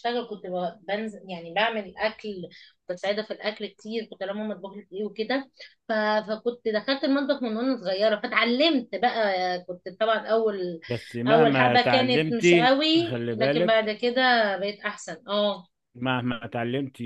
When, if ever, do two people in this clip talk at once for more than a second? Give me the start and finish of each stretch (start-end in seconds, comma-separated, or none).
11.3-13.8